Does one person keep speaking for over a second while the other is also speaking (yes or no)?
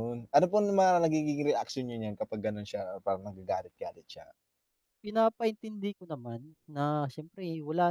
no